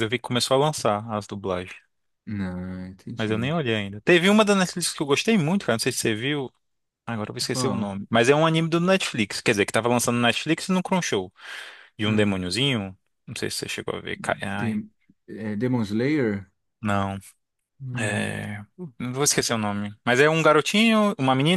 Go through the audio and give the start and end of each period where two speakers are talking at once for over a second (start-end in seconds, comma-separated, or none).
none